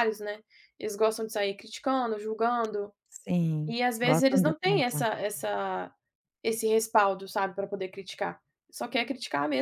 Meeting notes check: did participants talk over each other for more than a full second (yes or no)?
yes